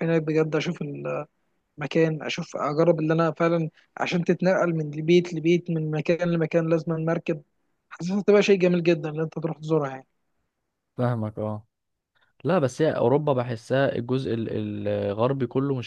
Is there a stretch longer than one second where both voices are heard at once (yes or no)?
no